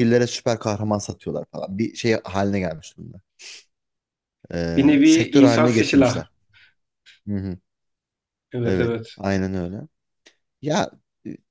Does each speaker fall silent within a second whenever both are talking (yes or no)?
no